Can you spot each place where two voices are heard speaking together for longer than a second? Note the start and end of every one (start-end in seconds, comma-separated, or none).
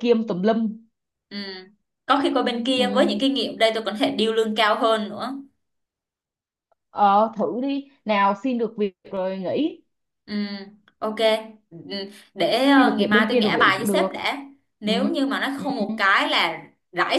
12.8-14.1